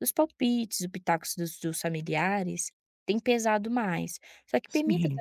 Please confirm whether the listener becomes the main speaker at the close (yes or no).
no